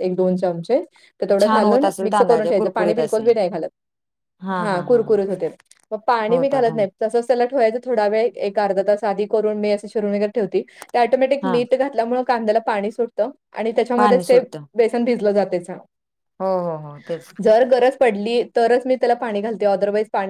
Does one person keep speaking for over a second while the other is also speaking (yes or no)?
yes